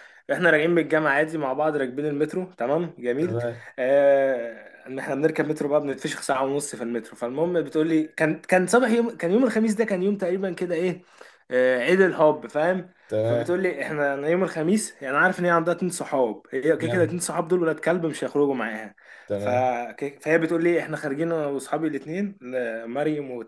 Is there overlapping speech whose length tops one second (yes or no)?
no